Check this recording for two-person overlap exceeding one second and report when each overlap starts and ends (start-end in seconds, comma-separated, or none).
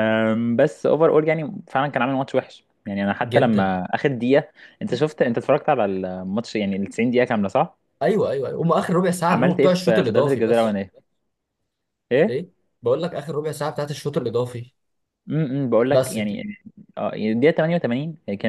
9.3-10.8